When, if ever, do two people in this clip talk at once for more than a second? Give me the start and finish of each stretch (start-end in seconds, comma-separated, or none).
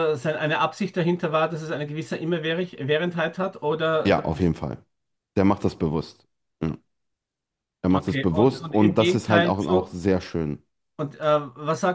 7.9-10.0